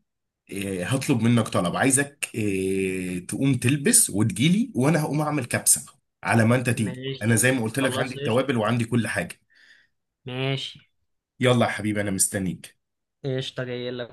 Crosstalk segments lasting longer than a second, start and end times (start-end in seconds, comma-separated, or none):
6.8-8.4